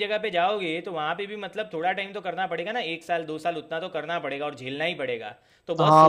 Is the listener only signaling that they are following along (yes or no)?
no